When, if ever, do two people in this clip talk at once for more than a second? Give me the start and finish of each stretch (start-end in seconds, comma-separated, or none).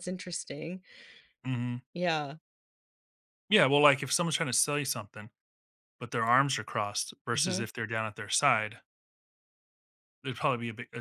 none